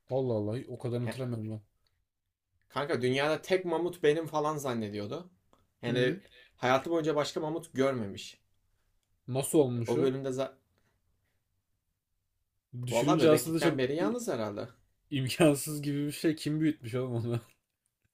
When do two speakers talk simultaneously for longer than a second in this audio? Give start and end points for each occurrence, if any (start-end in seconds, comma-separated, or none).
12.9-14.2